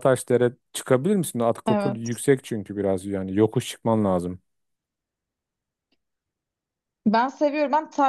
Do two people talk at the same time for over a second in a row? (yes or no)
no